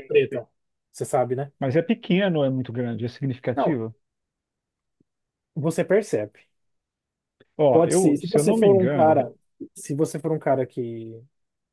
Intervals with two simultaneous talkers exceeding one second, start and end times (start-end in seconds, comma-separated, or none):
7.7-9.3